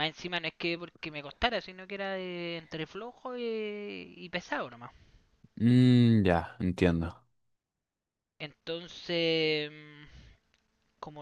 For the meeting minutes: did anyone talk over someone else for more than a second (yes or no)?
no